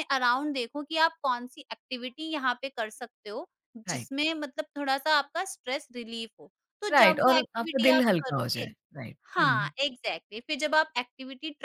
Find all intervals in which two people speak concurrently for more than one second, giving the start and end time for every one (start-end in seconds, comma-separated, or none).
6.9-8.7